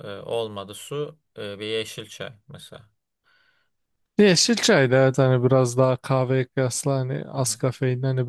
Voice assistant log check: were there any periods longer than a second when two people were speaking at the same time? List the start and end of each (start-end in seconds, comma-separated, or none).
none